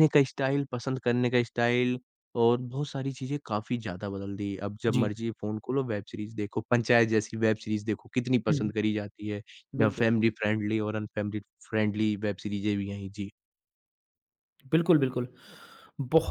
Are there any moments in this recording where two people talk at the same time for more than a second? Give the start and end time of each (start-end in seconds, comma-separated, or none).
none